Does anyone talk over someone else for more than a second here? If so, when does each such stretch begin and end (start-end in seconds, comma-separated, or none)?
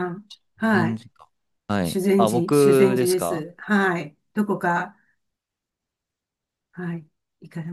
1.8-3.5